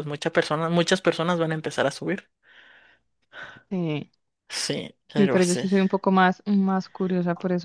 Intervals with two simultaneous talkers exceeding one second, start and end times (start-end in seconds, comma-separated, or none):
none